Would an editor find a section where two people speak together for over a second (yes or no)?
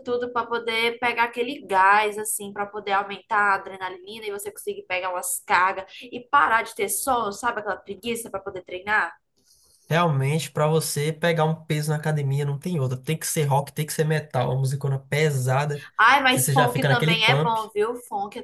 yes